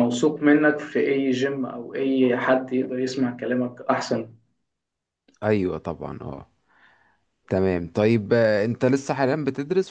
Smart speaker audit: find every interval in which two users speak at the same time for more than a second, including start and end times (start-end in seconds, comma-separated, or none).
none